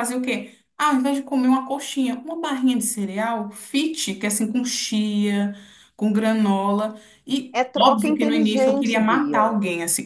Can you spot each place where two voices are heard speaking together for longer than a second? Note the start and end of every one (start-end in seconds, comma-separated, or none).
7.5-9.5